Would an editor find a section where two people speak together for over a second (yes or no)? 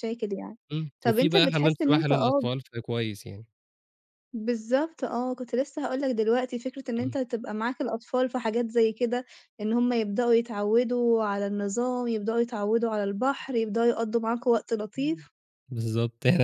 yes